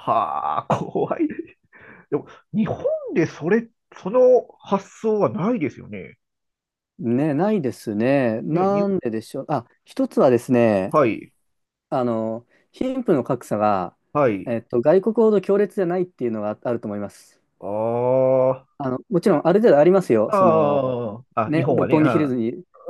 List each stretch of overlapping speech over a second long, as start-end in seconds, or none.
20.3-22.4